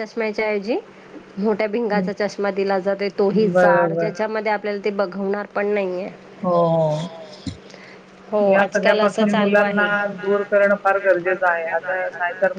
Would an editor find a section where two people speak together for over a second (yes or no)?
no